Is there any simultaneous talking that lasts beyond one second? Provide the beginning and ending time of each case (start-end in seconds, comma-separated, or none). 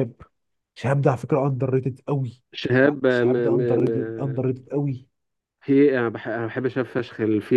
2.8-4.5